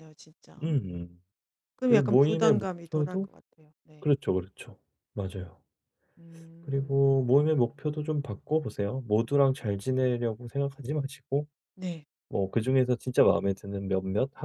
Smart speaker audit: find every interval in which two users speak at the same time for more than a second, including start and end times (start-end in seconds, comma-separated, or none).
1.8-3.3